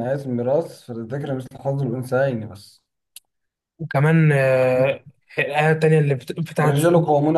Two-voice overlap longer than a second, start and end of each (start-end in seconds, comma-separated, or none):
none